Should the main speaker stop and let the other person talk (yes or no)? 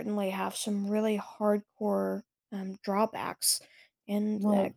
yes